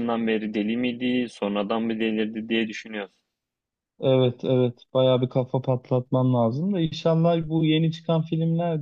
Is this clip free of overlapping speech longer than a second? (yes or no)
yes